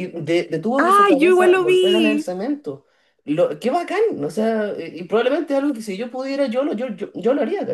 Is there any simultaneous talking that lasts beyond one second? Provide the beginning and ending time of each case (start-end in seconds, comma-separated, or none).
0.8-2.3